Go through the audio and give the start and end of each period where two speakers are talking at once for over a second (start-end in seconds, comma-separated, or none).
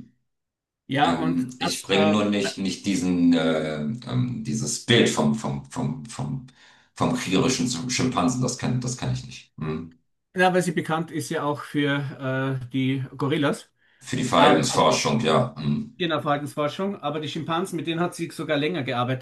1.0-2.3